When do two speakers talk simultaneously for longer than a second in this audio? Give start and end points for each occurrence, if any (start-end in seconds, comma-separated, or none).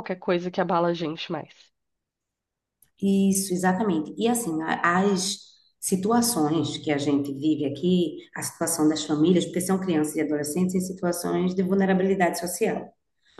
none